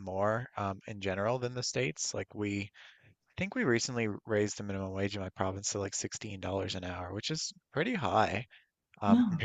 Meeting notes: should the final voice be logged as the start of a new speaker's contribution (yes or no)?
no